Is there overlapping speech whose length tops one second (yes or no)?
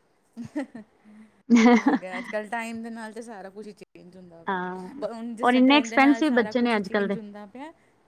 yes